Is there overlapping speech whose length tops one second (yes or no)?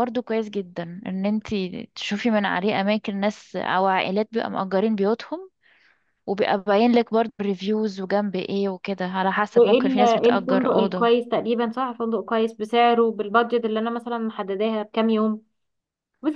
yes